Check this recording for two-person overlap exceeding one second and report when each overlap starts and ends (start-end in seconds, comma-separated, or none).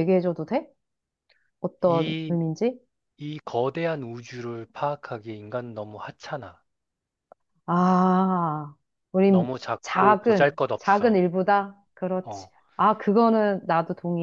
9.3-11.2